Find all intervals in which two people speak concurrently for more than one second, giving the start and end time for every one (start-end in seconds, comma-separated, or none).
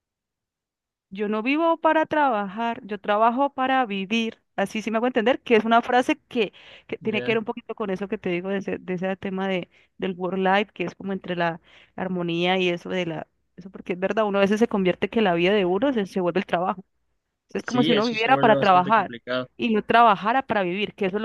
17.6-19.1